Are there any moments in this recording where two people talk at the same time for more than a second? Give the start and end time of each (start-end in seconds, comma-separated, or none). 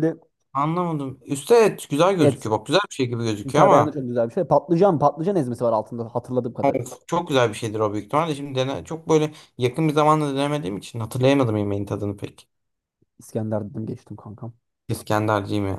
none